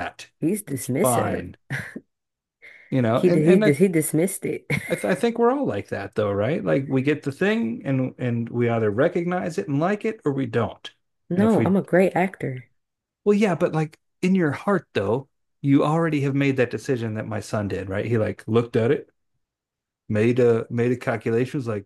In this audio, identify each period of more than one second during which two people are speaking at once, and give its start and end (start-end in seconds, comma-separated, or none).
none